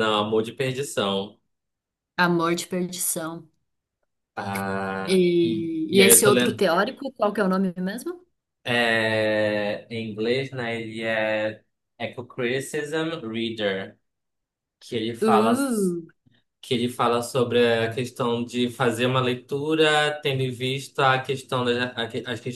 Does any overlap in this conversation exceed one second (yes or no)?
yes